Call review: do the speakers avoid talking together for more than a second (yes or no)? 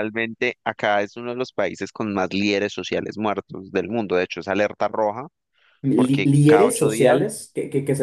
no